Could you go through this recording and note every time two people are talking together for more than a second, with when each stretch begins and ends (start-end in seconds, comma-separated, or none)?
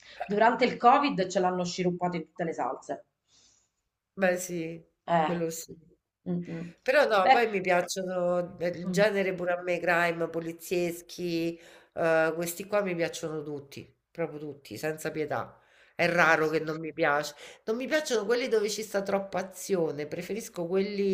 none